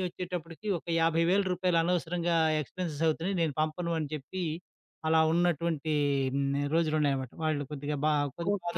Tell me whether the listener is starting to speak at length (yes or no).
yes